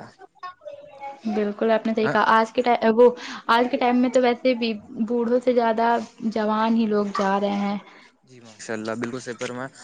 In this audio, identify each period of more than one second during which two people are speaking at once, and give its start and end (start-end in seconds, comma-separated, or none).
none